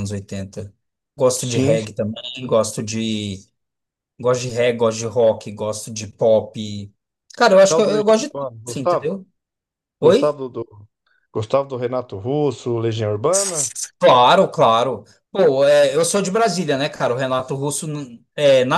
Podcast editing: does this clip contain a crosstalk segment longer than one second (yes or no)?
yes